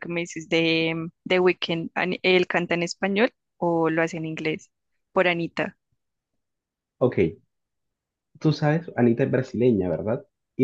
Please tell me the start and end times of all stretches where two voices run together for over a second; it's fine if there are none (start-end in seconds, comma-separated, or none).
none